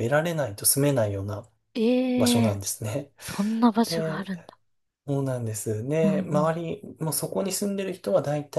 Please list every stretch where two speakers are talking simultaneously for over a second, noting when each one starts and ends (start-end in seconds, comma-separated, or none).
none